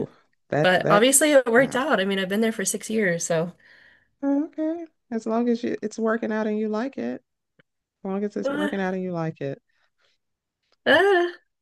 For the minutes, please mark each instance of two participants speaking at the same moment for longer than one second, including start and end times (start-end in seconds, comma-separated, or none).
0.6-1.8